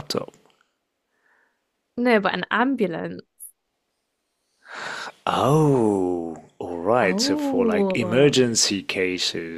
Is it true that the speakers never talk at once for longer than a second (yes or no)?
no